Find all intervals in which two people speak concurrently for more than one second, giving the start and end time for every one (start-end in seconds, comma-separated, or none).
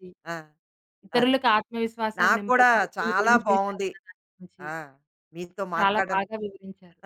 2.2-3.9